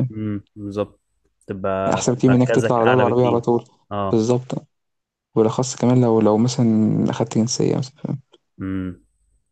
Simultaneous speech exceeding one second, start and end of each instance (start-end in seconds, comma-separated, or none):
1.9-3.4